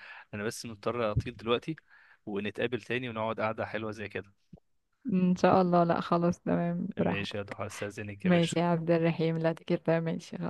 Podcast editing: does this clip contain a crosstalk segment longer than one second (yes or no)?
no